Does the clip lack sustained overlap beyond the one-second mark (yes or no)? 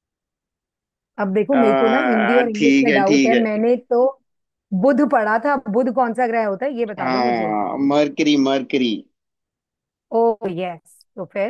no